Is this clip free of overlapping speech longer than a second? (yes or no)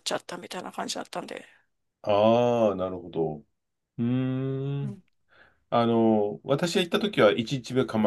yes